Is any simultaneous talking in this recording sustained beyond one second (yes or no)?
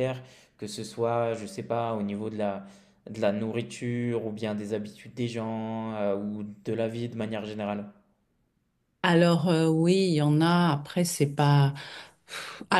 no